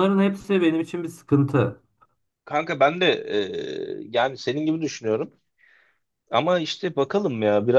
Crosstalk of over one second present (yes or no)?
no